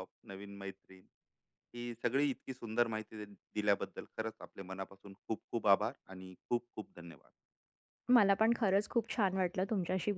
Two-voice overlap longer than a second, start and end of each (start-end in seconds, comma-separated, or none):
none